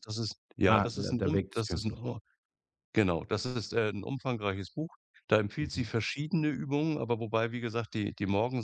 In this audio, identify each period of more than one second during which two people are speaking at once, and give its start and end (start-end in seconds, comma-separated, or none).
0.7-2.0